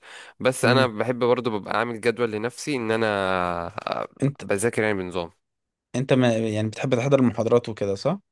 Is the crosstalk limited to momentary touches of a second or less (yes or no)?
yes